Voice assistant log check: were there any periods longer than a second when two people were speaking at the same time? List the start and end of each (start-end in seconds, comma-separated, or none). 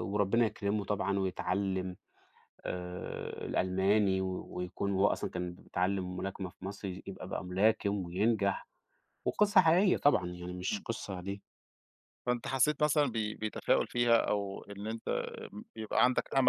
none